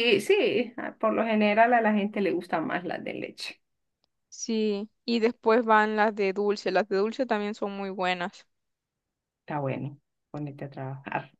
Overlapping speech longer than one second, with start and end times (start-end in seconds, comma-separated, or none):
none